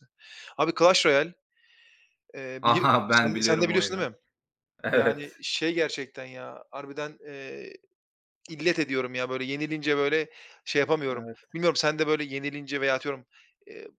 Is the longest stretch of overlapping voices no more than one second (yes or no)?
no